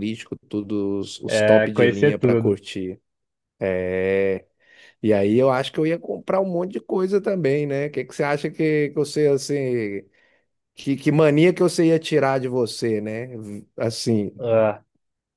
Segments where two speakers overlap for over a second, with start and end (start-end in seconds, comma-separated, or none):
1.3-2.6